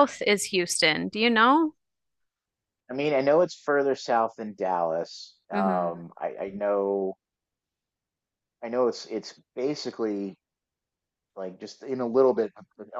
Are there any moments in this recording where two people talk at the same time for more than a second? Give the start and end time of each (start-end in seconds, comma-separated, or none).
none